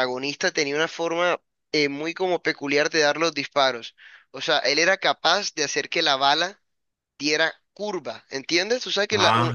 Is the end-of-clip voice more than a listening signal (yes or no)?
no